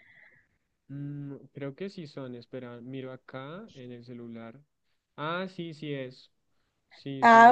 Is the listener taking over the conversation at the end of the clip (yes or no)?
yes